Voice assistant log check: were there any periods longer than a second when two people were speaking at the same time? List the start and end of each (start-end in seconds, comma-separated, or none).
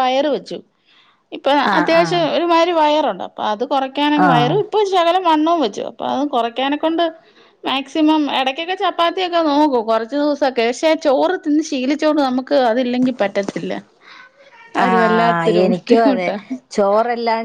14.8-16.3